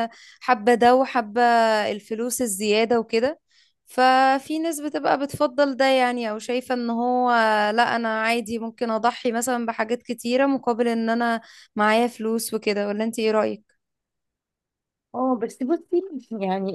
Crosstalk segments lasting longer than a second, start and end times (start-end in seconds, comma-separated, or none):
none